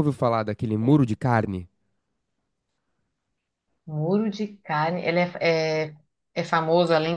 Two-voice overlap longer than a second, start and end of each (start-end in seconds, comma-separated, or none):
none